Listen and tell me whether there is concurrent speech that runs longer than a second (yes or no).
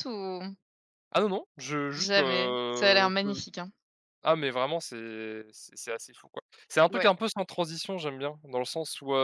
yes